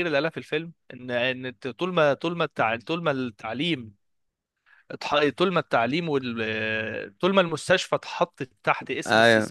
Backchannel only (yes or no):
yes